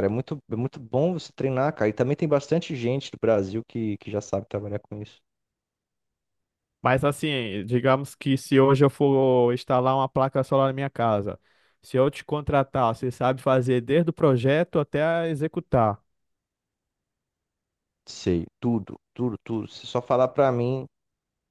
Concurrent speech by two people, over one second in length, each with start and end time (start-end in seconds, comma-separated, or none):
none